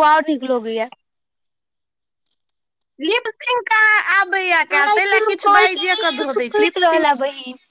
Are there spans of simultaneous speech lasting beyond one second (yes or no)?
yes